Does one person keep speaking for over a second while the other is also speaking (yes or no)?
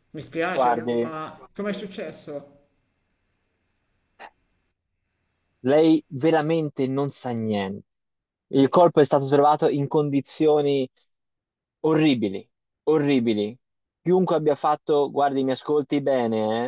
no